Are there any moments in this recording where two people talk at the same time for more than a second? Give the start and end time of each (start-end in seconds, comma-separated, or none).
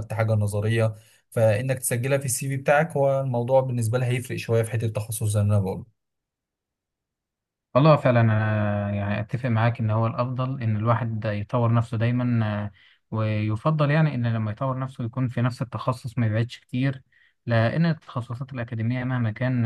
none